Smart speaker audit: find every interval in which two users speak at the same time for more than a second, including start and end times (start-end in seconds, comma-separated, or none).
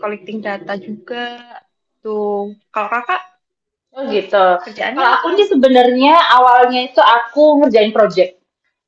none